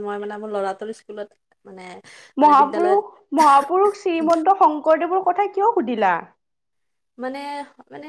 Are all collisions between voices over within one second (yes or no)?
yes